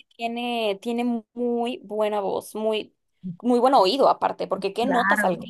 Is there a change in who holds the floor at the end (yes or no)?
yes